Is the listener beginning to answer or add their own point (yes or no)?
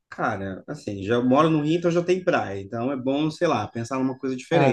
no